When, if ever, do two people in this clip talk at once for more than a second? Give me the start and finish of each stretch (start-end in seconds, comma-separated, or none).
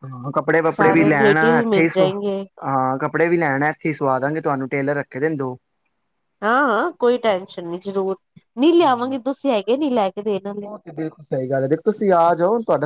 0.7-2.4